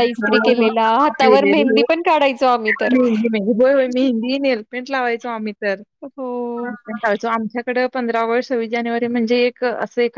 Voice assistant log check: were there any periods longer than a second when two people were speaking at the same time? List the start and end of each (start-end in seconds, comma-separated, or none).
none